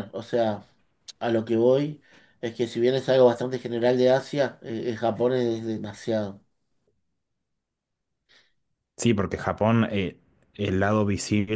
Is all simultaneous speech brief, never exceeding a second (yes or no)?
yes